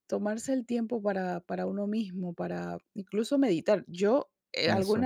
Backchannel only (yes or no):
yes